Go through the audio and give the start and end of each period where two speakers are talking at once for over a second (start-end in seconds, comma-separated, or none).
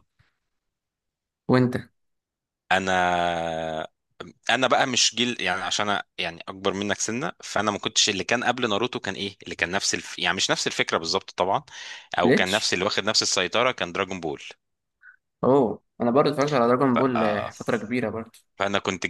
none